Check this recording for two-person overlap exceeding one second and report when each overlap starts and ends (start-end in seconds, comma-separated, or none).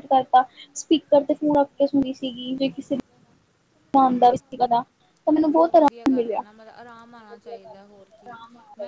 none